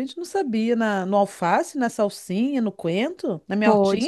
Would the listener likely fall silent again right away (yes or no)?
no